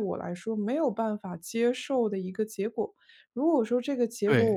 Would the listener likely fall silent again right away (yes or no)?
yes